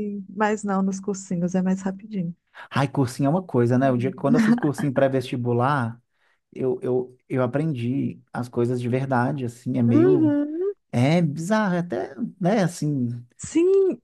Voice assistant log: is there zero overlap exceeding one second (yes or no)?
yes